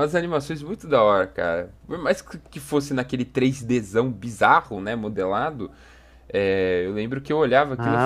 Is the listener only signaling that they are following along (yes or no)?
no